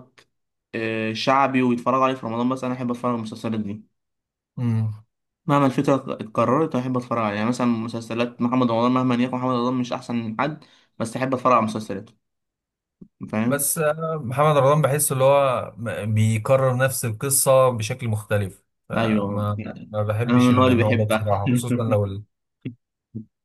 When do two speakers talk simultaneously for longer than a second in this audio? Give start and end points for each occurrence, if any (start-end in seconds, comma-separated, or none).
19.0-21.4